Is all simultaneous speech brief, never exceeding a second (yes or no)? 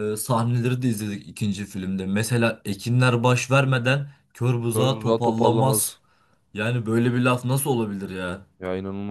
no